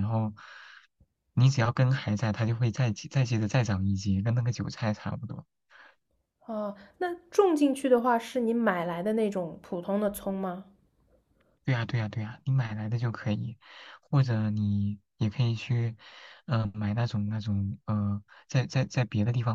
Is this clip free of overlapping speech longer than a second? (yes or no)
yes